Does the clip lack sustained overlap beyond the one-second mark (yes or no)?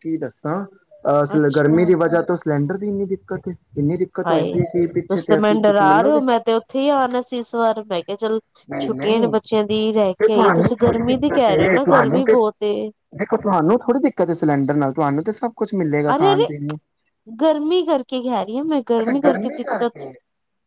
no